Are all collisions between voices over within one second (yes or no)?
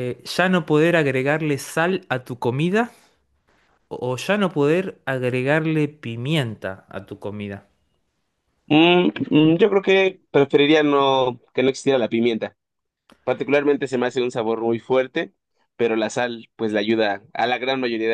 yes